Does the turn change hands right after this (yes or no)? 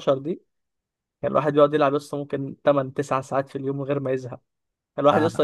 no